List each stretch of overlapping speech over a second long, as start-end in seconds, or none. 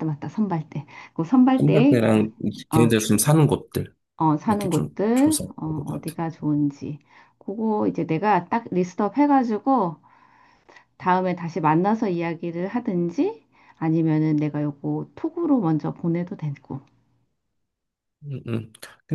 4.5-6.2